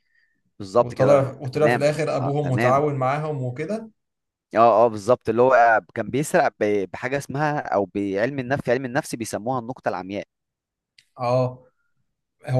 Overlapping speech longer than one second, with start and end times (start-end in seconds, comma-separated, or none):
0.8-2.8